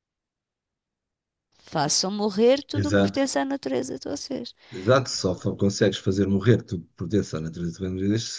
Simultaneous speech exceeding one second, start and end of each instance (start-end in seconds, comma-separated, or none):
none